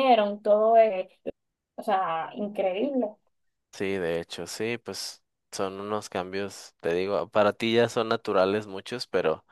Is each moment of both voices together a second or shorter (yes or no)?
yes